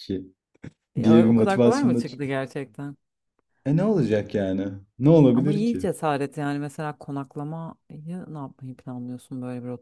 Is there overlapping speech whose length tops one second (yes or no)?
yes